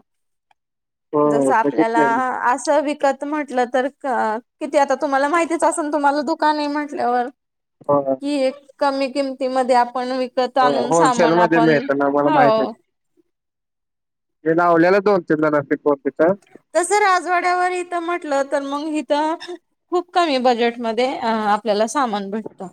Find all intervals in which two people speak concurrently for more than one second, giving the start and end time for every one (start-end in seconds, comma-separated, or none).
none